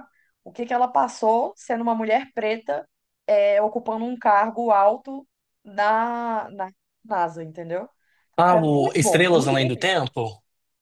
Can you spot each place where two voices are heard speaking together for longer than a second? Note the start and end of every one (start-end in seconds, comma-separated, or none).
8.4-9.9